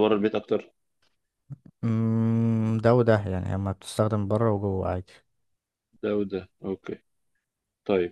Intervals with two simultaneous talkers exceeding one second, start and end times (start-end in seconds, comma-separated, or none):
none